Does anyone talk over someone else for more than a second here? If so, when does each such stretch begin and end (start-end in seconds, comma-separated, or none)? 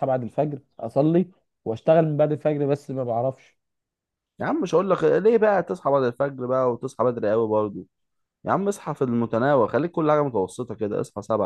none